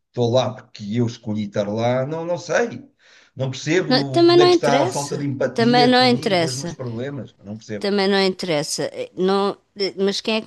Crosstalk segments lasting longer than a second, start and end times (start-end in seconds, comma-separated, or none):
3.9-6.8